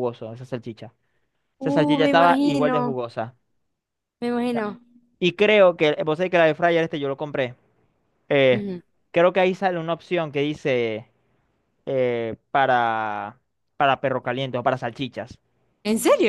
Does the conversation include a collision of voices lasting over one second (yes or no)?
yes